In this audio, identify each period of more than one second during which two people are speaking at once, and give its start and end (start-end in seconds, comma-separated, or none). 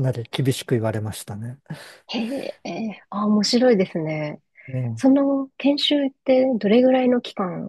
none